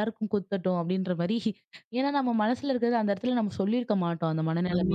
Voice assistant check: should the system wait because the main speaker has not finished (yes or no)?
no